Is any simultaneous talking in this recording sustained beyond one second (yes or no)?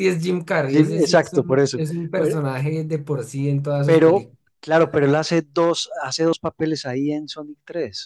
yes